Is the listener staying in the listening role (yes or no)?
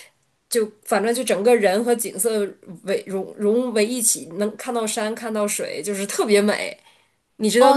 no